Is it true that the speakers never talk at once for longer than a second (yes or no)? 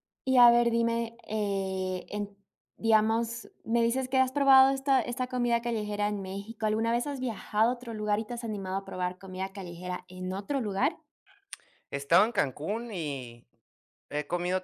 yes